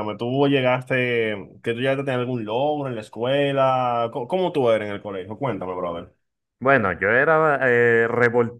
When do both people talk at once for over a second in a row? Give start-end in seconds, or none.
none